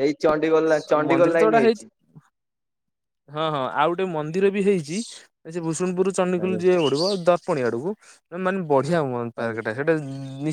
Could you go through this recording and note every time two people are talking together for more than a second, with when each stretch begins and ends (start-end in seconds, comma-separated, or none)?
none